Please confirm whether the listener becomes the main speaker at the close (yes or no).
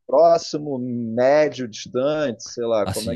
yes